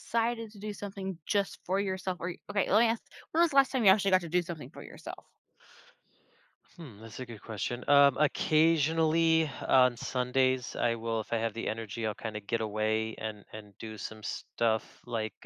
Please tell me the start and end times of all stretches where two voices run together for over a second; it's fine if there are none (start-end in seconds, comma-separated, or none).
none